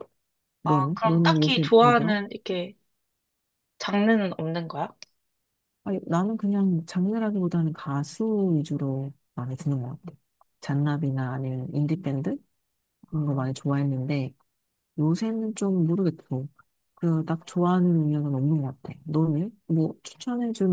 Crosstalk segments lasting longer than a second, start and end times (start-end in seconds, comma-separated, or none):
0.6-2.2